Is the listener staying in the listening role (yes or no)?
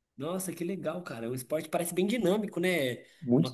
yes